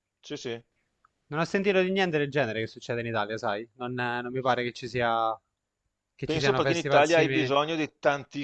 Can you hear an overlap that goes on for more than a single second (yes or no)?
yes